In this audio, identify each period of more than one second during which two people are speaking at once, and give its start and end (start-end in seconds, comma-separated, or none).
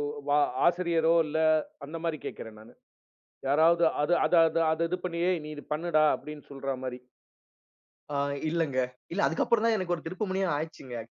none